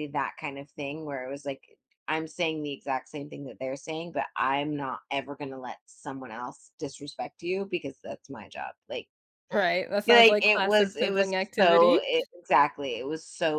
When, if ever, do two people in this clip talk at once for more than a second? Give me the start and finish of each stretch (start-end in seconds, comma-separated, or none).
10.1-12.0